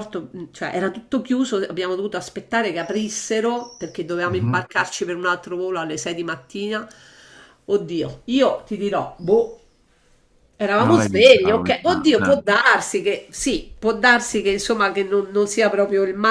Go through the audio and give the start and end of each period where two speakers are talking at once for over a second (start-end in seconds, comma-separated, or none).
10.8-12.4